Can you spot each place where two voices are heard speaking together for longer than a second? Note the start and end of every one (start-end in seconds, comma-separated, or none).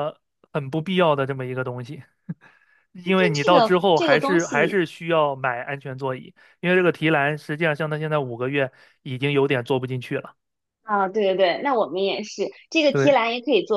3.0-4.8